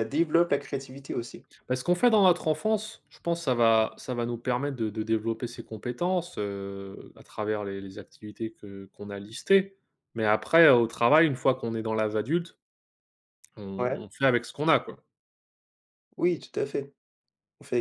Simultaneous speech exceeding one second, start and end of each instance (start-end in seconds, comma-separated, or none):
none